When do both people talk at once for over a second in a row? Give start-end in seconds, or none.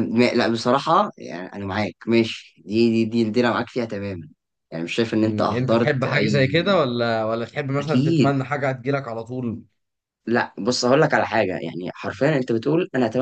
5.2-6.5